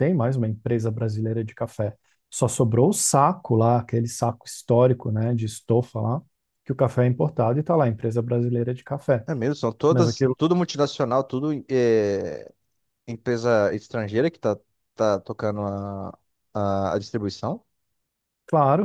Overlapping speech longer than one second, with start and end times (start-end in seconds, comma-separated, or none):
none